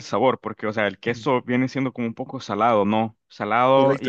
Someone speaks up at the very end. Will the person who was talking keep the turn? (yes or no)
no